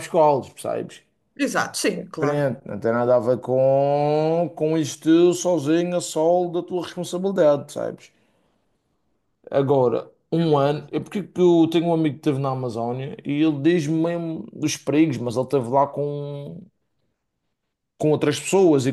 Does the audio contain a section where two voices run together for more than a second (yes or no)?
no